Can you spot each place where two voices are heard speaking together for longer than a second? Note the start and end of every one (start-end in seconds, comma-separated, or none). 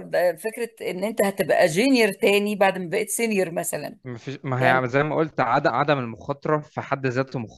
none